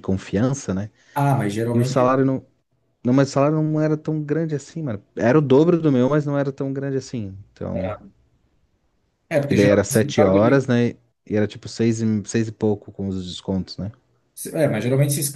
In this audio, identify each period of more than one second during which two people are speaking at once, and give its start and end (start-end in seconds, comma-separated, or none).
9.4-10.7